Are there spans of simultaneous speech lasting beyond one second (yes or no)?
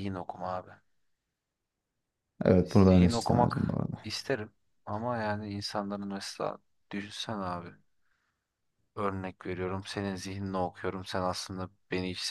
yes